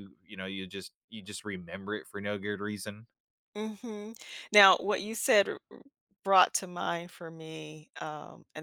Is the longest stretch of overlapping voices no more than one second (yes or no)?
yes